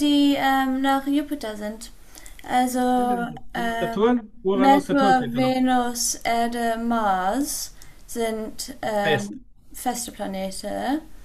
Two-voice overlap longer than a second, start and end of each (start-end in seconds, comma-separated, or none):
3.8-5.5